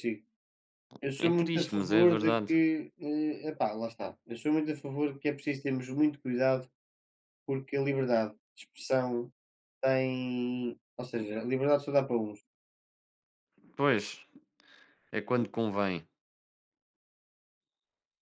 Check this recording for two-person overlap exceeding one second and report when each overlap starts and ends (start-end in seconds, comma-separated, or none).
1.2-2.5